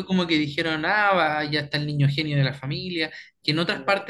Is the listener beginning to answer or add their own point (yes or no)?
no